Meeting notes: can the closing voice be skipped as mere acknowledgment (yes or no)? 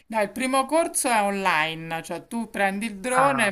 yes